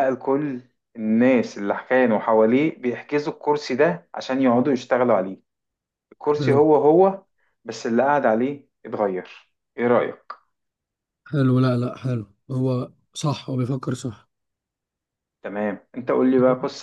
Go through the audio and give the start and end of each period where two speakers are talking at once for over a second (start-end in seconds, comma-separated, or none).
none